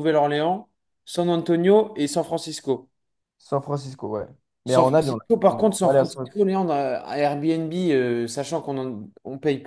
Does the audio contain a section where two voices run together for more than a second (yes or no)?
yes